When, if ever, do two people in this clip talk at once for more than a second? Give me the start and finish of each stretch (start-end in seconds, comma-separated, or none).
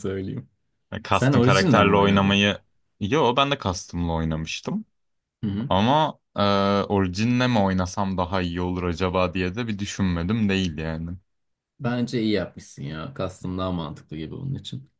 1.1-2.4